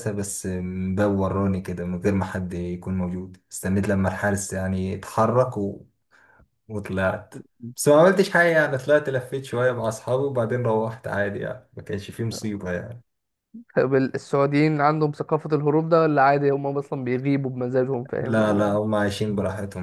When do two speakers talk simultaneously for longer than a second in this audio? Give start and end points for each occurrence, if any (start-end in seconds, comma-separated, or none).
none